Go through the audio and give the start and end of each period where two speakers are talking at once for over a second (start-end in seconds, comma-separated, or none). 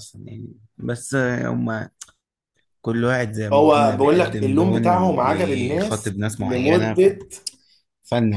3.5-7.1